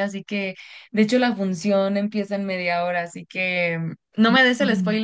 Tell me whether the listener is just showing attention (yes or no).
yes